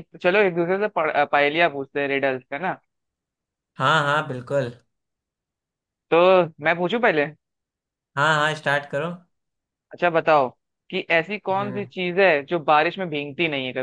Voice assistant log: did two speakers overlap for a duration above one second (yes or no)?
no